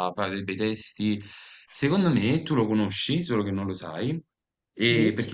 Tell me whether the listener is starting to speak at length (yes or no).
no